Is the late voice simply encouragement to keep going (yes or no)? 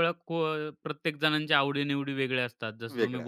yes